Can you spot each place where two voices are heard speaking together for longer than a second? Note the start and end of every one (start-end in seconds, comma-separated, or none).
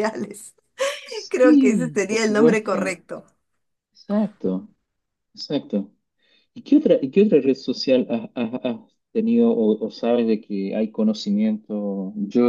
1.3-3.0